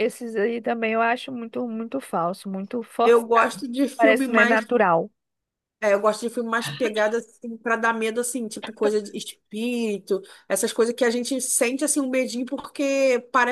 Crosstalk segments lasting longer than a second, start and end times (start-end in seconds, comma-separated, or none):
3.0-4.7